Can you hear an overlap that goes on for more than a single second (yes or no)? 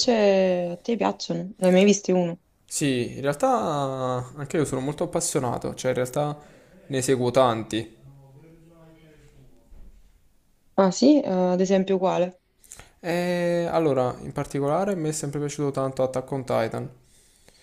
no